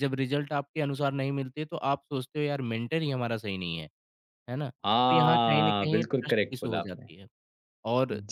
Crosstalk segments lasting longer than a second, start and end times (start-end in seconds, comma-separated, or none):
4.8-7.1